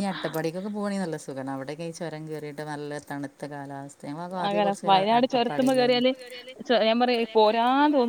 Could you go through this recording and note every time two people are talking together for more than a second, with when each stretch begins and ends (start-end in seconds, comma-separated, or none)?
4.5-6.0